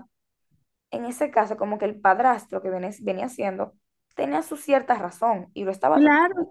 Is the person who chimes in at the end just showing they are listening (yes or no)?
no